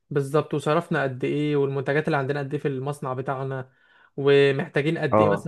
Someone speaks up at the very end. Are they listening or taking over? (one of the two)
listening